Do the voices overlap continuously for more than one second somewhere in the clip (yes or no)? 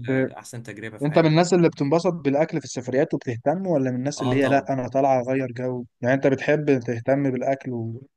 no